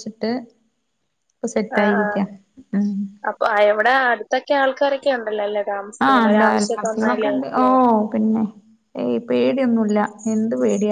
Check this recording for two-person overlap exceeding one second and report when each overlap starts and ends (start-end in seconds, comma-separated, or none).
none